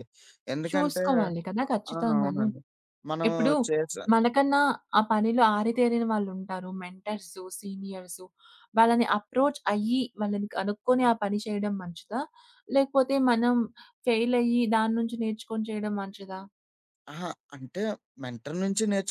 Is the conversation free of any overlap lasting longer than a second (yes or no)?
yes